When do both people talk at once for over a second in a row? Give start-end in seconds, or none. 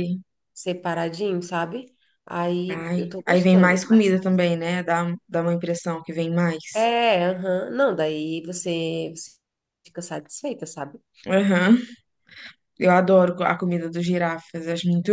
2.7-4.1